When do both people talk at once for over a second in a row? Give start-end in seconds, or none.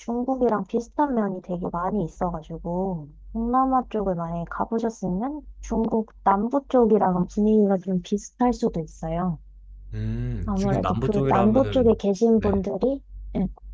10.4-12.5